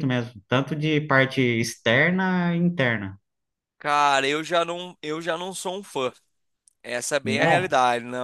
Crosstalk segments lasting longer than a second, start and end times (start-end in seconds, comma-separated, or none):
none